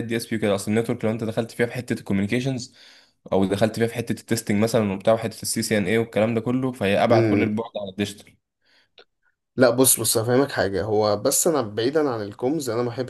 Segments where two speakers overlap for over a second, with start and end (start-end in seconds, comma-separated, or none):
none